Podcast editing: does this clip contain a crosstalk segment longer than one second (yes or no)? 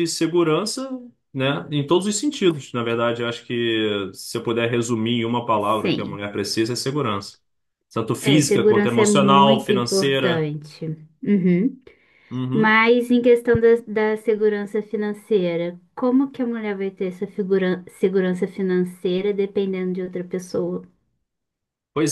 yes